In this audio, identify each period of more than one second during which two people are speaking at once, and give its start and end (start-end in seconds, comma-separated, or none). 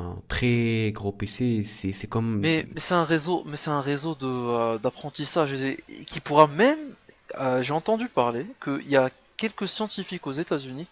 none